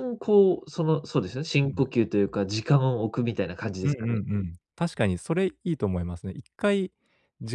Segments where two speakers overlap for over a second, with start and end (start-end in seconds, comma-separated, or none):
none